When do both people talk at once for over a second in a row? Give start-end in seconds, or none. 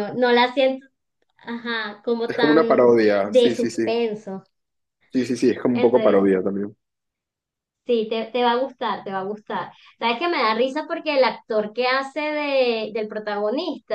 2.3-3.9